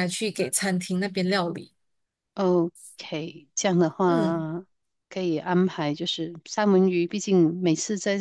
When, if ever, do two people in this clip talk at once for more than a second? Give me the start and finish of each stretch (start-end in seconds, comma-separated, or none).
none